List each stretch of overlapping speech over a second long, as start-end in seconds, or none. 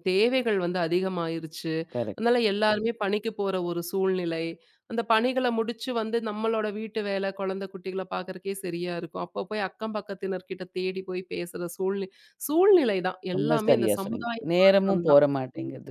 13.4-15.2